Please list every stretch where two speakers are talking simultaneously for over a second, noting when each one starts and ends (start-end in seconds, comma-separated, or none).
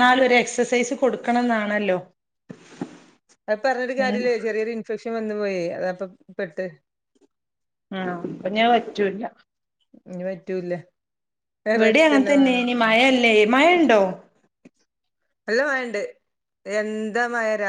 none